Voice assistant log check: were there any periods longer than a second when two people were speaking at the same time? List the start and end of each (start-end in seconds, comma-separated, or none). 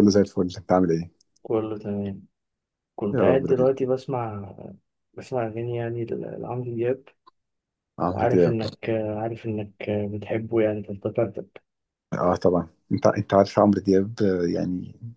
none